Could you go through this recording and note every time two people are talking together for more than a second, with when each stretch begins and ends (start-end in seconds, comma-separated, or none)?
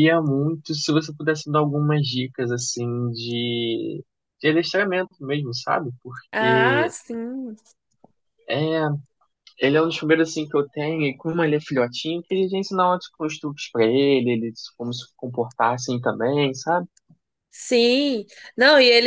none